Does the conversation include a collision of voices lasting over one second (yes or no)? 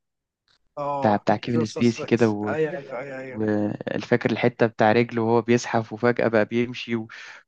yes